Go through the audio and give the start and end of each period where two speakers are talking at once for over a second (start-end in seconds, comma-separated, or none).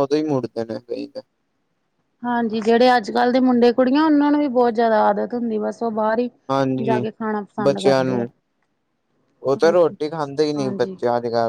none